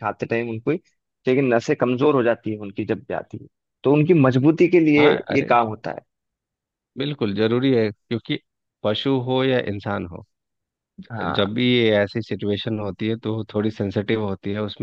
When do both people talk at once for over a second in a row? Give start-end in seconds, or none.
none